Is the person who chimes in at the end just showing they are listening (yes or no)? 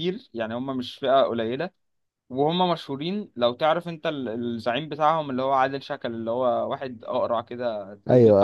no